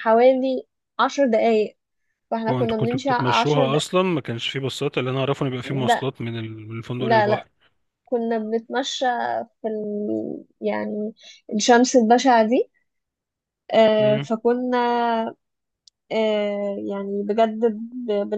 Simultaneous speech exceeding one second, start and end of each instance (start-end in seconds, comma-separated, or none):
2.5-3.8